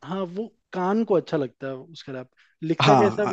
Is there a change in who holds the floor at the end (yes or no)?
yes